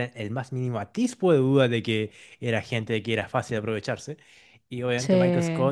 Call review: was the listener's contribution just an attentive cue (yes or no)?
yes